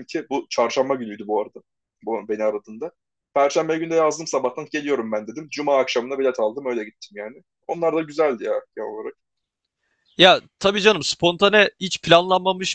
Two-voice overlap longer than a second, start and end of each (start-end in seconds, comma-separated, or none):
none